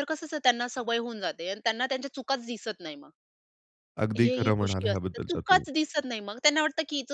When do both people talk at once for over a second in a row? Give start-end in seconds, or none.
4.2-5.7